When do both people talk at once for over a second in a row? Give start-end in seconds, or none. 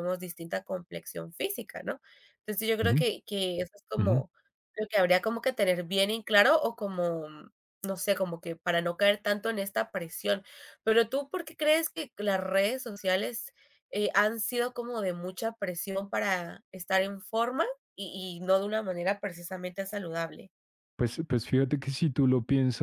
none